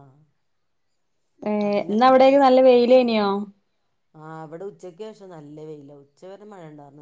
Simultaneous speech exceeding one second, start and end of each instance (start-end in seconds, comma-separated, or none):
none